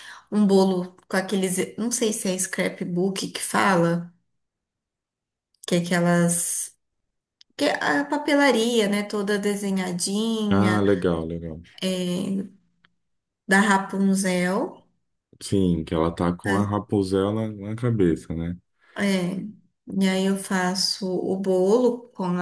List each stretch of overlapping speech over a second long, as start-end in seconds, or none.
none